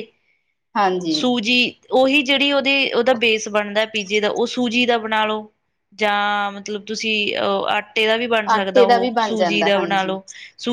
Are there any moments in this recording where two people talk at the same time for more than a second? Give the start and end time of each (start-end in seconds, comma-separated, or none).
8.5-10.2